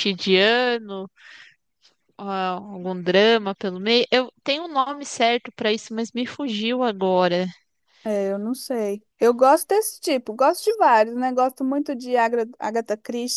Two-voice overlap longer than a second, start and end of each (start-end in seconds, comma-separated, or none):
none